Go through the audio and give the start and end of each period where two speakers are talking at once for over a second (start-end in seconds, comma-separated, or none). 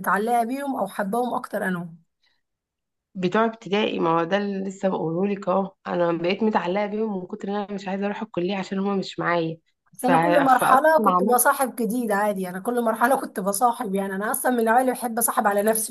10.0-11.4